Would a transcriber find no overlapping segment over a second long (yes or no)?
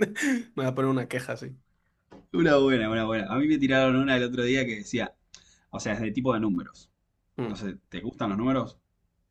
yes